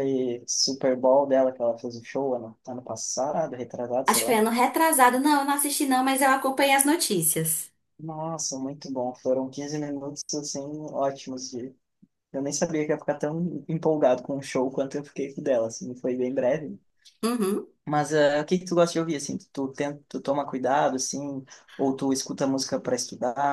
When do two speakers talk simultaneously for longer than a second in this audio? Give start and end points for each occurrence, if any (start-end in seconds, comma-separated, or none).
none